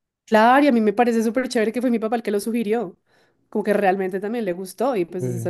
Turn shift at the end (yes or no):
no